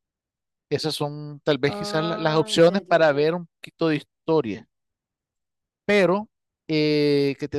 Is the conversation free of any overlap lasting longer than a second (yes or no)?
no